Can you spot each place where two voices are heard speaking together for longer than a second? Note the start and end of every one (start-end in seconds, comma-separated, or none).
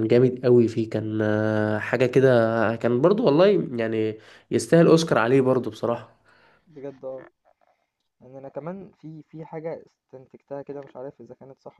none